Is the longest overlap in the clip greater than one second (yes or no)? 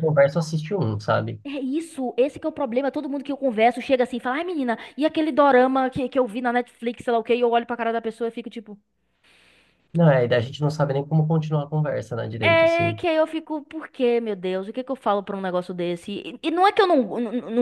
no